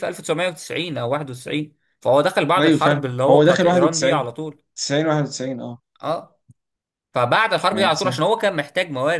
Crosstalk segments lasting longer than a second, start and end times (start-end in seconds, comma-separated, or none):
2.6-4.3